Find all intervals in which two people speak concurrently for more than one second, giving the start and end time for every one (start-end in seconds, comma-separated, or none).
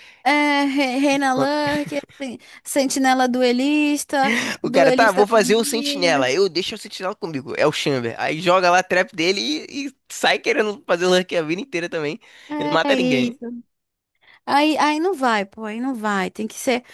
4.6-6.3